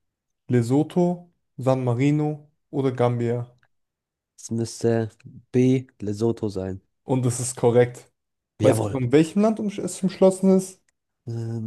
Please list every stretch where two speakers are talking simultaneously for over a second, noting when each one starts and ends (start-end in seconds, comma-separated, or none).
none